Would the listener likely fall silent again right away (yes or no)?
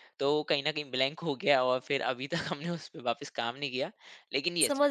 no